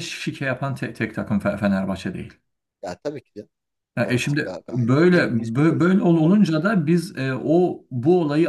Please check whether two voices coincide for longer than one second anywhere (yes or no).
yes